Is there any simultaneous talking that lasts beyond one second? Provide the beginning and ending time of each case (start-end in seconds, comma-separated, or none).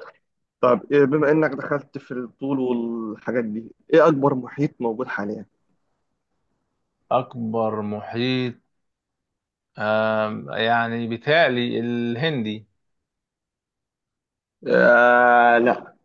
none